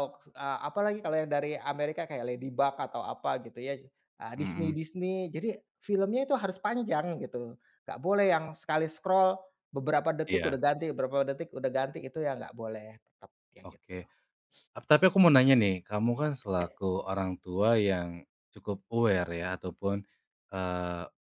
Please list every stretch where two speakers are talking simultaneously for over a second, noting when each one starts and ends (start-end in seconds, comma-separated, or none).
none